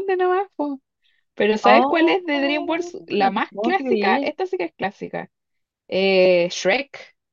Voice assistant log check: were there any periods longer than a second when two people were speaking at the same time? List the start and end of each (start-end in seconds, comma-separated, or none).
1.6-4.3